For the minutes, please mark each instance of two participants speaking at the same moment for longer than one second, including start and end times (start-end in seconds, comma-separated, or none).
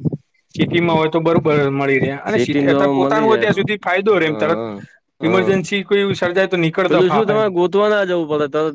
2.3-3.6